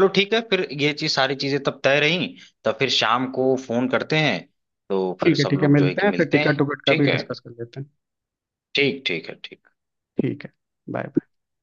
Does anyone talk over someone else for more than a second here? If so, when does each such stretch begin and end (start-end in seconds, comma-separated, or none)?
5.2-7.2